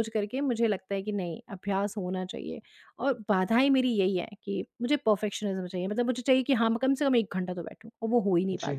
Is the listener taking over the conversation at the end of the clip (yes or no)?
yes